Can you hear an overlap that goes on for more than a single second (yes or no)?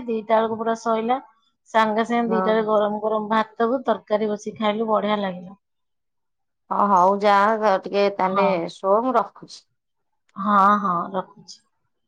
no